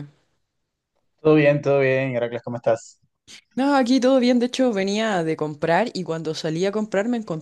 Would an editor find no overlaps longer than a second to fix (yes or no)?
yes